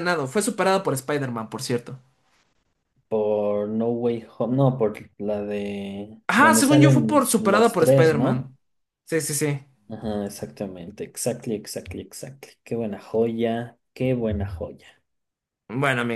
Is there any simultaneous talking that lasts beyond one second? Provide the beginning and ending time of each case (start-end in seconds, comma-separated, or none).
6.3-8.5